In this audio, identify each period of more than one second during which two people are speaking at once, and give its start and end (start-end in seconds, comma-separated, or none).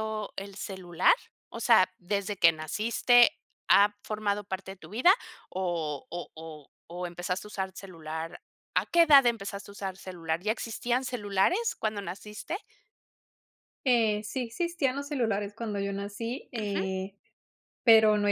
none